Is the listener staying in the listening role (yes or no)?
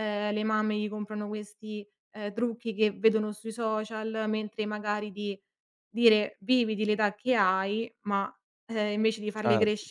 yes